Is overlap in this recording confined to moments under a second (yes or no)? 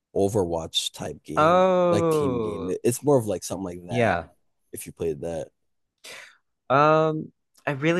no